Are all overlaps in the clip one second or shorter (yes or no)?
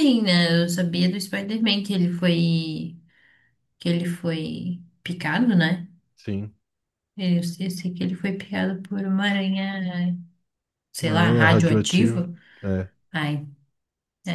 no